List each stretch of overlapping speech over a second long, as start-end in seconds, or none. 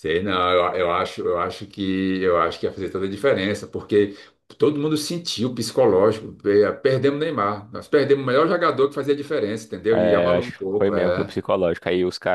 9.9-11.3